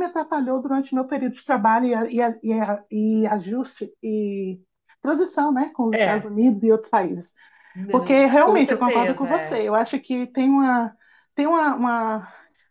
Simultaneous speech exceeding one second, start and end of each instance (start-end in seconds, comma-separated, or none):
7.9-9.7